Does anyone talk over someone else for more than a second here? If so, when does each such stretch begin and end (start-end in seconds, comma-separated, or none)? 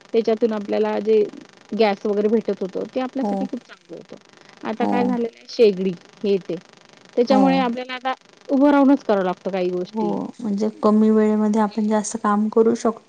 none